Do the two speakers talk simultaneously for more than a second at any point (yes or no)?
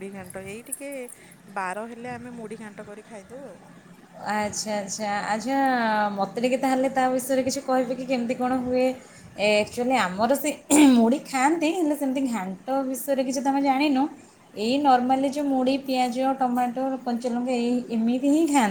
no